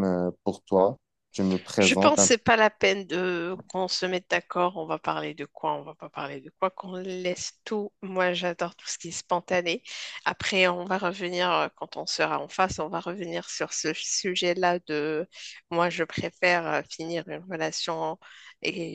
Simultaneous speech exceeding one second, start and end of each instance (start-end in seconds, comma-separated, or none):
none